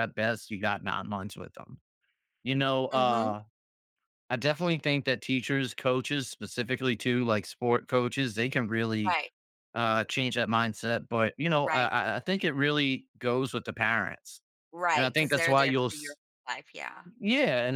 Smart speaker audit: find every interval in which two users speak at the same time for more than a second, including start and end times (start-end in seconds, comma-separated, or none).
14.9-16.2